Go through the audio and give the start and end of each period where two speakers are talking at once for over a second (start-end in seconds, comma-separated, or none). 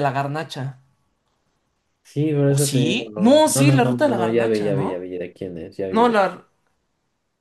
2.5-5.1